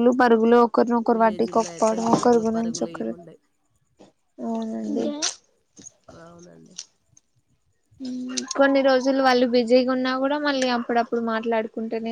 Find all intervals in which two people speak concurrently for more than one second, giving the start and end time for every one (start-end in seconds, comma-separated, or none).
1.1-3.1